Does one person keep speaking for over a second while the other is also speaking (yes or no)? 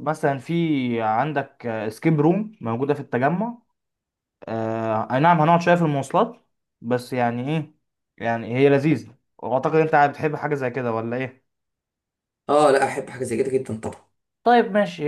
no